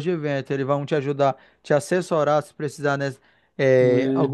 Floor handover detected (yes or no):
no